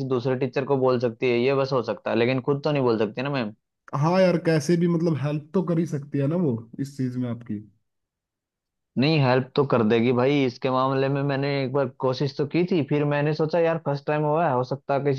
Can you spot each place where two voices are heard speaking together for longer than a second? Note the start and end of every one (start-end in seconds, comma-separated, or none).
none